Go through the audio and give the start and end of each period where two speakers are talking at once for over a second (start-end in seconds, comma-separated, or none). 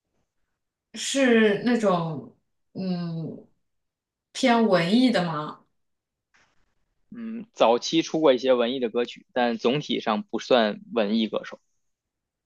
none